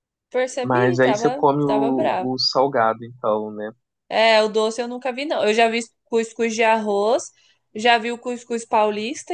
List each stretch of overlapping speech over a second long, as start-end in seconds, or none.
0.6-2.3